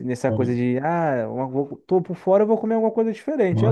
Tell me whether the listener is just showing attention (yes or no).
no